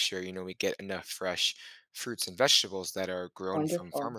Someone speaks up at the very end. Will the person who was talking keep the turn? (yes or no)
yes